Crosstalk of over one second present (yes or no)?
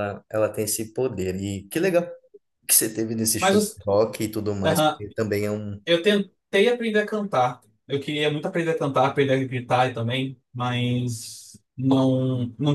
no